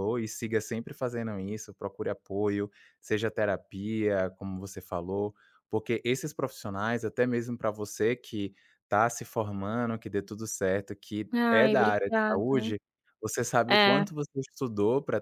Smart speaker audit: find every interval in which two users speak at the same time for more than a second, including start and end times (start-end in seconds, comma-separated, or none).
11.3-12.7